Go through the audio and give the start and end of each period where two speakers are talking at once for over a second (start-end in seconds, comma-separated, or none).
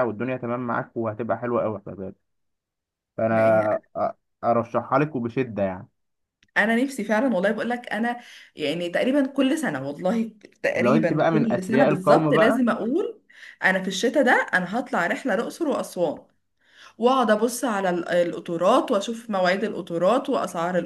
10.7-12.7